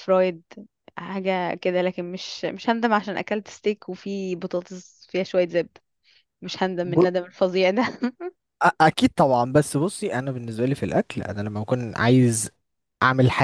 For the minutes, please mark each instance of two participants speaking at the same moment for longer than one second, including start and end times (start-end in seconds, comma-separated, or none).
none